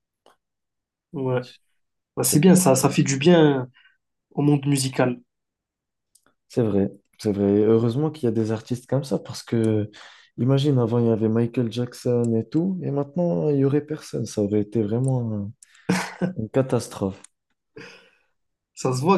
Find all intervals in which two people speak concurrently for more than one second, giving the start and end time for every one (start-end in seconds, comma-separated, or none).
none